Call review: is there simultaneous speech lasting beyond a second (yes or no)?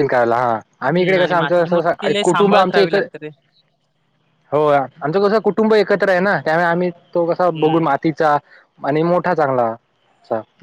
yes